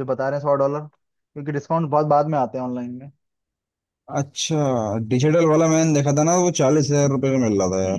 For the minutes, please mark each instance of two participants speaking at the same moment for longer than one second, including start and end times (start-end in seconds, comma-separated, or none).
none